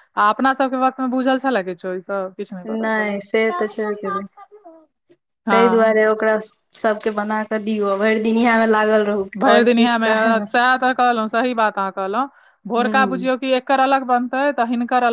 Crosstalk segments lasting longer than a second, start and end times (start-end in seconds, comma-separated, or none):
none